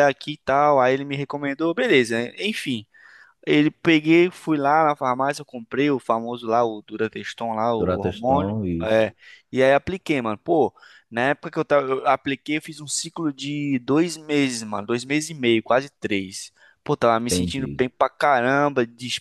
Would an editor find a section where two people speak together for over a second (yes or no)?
yes